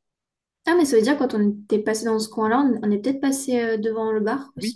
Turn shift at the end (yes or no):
yes